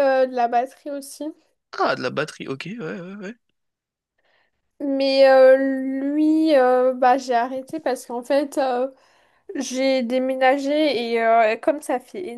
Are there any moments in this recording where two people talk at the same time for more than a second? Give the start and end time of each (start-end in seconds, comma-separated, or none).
none